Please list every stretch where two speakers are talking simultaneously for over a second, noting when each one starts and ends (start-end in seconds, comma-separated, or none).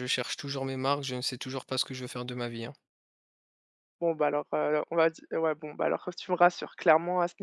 none